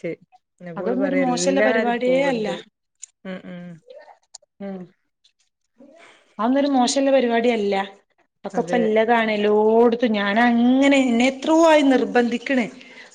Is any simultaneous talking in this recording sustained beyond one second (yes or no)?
yes